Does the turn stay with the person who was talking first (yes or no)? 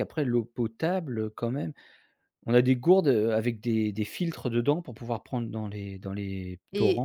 no